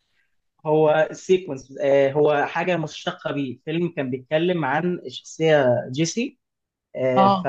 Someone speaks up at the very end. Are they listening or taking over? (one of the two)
listening